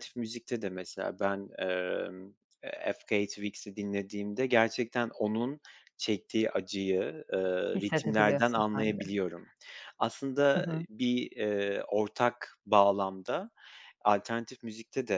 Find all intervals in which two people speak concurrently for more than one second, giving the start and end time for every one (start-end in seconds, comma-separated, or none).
7.8-9.0